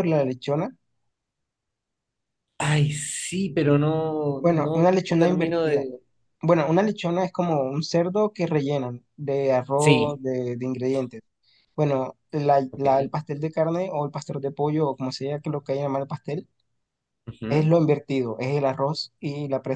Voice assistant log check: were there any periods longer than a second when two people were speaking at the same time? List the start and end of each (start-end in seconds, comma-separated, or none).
4.4-5.8